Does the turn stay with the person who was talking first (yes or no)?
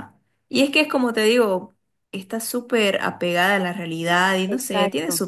yes